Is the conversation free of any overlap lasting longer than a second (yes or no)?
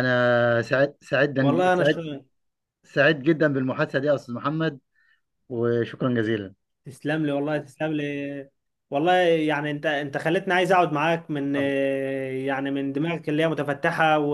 yes